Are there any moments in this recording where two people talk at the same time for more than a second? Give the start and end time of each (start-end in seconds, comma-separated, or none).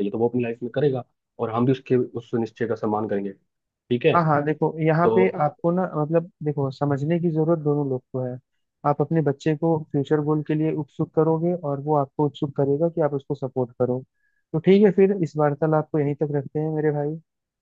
none